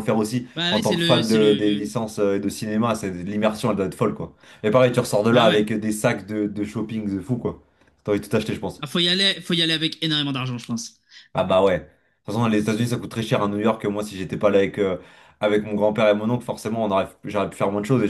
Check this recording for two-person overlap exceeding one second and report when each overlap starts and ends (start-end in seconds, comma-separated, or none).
0.6-1.9